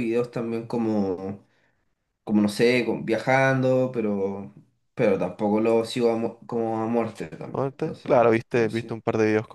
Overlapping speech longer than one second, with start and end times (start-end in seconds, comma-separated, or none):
7.5-9.0